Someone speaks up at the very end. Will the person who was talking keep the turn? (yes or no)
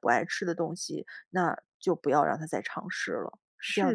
no